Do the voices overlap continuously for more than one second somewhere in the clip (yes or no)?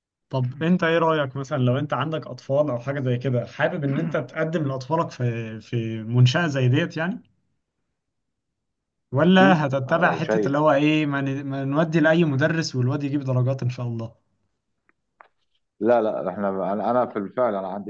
yes